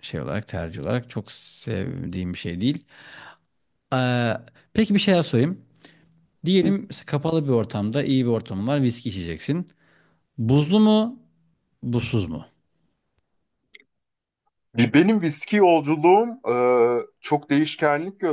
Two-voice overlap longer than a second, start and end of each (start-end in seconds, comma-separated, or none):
none